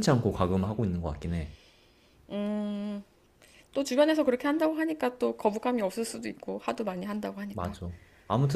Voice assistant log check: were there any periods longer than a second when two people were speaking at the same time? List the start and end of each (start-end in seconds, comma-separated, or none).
none